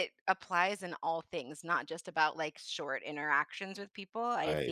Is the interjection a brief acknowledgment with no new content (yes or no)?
yes